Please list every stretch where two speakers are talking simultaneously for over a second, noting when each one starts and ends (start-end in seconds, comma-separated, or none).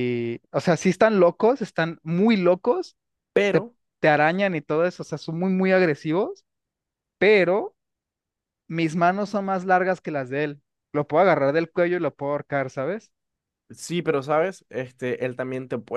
none